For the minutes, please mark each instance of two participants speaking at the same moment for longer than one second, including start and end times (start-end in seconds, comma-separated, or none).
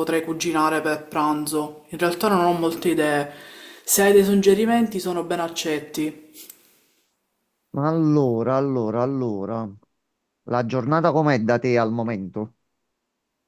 none